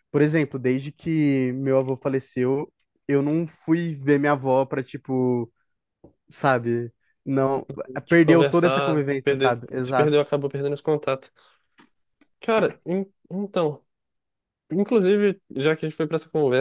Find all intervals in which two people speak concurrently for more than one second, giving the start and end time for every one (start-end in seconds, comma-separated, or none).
8.1-10.1